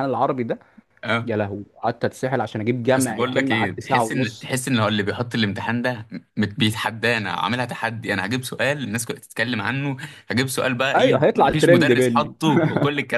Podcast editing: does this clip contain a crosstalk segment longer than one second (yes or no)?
yes